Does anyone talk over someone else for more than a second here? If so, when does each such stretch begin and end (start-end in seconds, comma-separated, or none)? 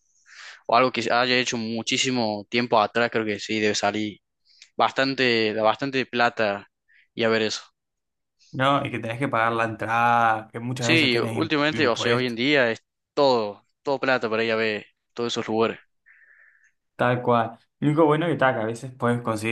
10.8-12.4